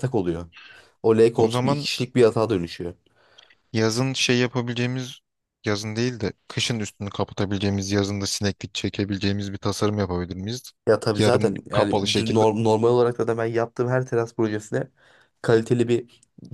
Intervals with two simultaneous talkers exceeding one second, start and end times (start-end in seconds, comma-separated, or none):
11.2-12.4